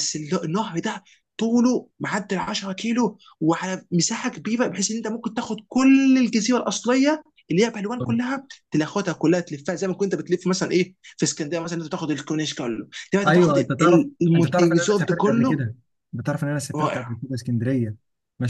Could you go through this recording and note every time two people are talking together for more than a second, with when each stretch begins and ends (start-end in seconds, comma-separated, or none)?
13.3-15.6